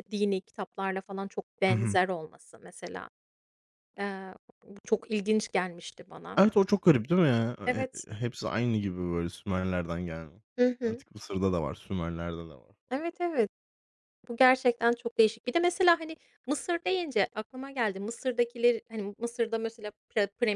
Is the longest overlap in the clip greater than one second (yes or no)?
no